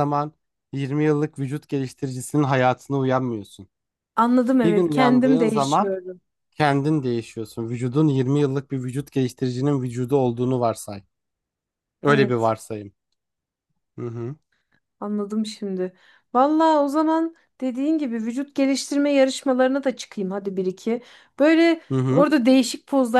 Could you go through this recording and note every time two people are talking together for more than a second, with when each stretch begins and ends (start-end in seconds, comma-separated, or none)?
4.6-6.0